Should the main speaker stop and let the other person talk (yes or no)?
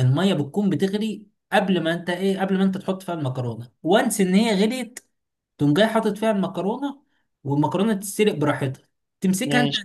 no